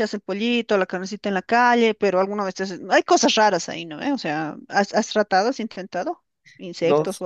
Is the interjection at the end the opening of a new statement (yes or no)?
yes